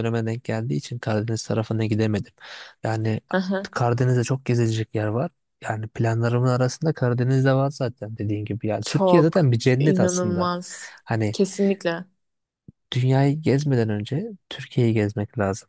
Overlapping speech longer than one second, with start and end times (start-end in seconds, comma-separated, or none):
8.8-10.5